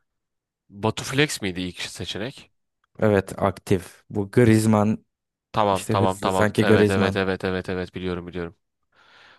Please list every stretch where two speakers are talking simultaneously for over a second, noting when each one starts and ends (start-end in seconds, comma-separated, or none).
5.7-7.2